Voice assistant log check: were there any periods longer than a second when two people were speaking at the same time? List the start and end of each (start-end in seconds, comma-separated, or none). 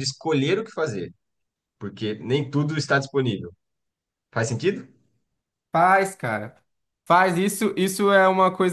none